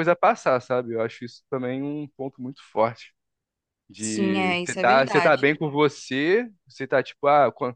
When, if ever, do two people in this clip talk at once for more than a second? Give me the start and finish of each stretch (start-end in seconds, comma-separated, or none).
3.9-5.5